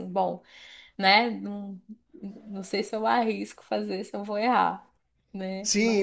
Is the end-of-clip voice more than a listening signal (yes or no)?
yes